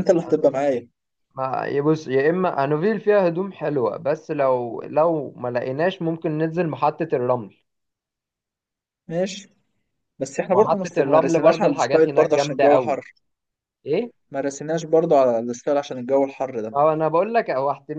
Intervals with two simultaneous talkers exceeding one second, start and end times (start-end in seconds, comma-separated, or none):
10.5-13.0